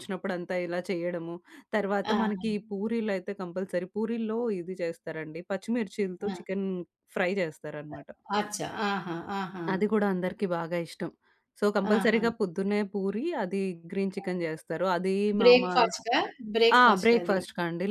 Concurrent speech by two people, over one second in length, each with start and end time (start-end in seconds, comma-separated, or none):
none